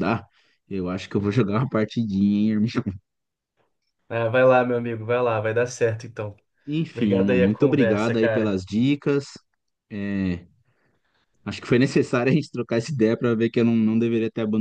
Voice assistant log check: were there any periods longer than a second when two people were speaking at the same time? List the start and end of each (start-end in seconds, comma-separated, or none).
6.9-8.6